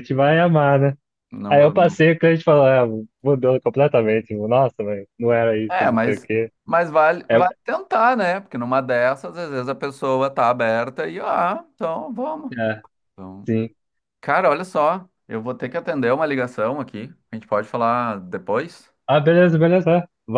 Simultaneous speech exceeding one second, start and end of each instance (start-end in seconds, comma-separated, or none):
none